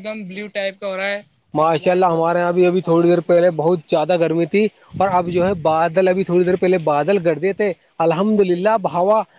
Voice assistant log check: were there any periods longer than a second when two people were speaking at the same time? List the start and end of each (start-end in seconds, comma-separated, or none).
1.6-3.5